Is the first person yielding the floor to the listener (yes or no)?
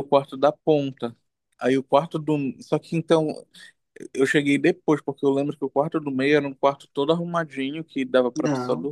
no